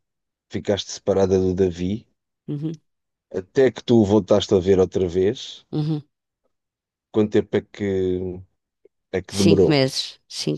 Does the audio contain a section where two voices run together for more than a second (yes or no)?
no